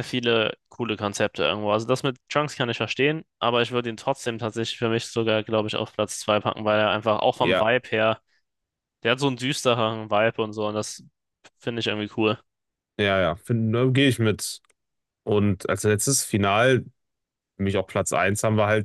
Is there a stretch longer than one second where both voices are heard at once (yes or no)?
no